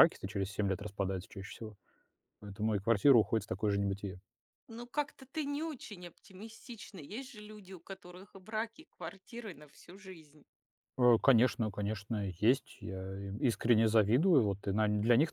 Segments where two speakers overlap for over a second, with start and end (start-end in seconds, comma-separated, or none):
none